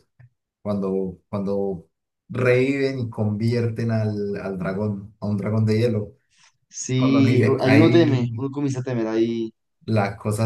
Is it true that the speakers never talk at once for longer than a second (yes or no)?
no